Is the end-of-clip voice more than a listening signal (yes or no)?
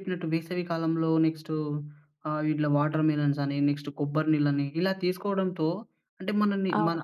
no